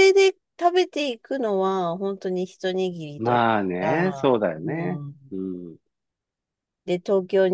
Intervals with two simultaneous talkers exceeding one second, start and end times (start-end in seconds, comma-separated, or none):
3.2-5.1